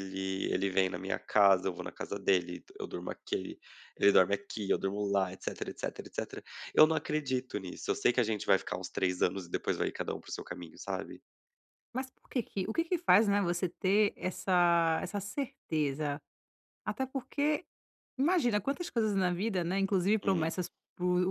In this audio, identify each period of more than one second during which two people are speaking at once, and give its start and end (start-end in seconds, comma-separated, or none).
none